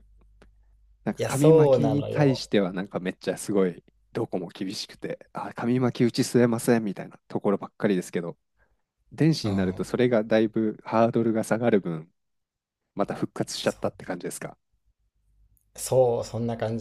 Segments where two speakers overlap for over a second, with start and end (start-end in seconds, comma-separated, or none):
1.2-2.5